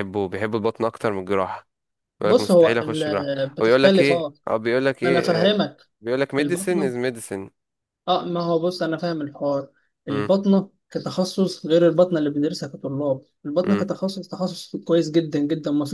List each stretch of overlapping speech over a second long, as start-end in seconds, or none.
2.2-4.3